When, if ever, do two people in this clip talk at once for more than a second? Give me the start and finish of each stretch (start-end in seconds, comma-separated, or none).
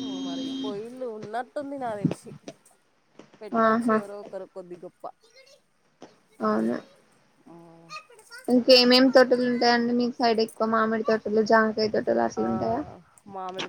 none